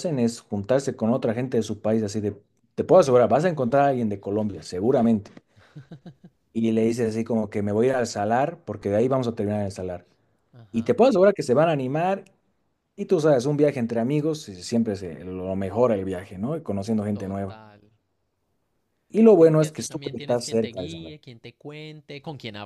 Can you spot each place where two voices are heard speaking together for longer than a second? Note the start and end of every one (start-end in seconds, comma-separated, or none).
19.4-21.1